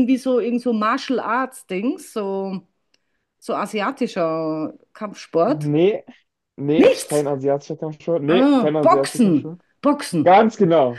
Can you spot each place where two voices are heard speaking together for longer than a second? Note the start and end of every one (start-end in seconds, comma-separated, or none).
8.3-9.6